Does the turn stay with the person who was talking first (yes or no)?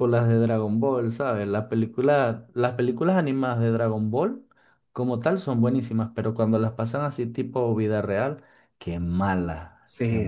no